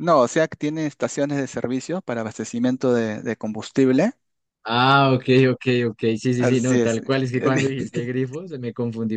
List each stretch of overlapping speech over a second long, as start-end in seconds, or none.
6.4-7.8